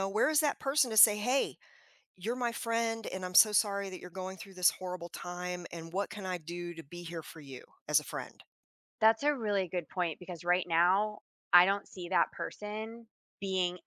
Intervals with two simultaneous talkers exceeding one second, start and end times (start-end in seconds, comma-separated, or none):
none